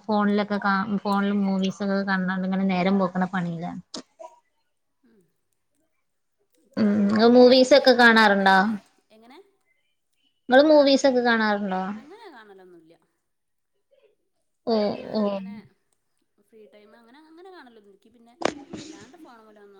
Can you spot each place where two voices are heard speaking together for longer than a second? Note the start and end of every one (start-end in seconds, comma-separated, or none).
6.8-8.6